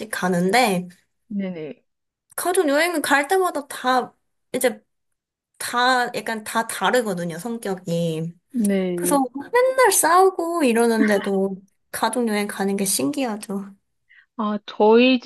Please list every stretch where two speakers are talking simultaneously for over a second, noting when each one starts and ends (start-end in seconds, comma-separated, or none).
none